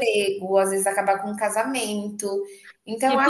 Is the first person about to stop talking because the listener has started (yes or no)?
yes